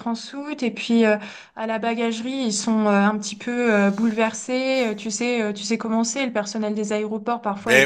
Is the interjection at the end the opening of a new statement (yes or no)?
yes